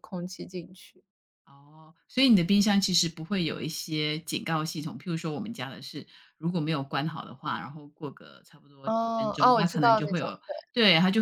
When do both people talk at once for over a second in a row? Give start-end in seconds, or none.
8.8-10.5